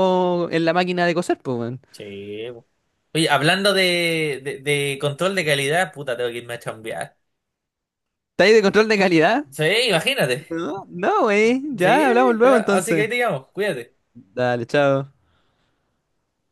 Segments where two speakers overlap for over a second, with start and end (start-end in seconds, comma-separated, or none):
11.8-13.1